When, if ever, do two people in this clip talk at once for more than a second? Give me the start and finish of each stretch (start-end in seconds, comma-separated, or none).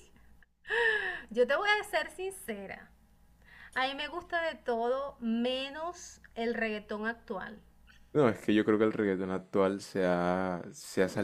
none